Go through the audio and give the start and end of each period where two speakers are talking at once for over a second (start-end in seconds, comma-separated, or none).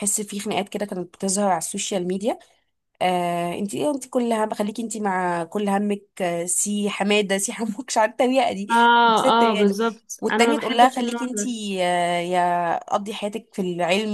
8.7-11.4